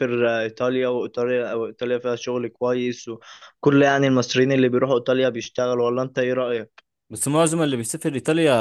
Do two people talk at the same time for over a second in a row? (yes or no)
no